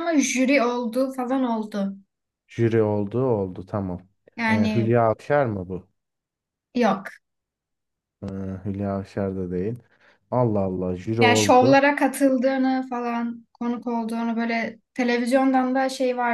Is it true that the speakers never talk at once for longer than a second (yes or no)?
yes